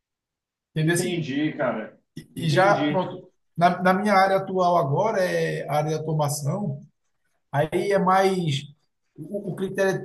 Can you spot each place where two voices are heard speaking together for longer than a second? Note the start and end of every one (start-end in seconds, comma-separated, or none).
none